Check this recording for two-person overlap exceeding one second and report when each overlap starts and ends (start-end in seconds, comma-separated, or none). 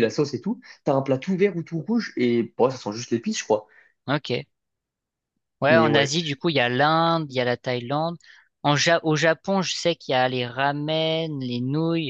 none